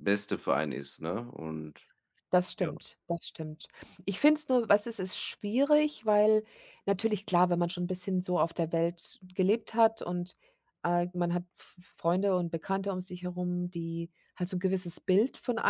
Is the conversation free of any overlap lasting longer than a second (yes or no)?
yes